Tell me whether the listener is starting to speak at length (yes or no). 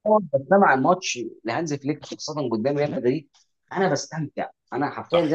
no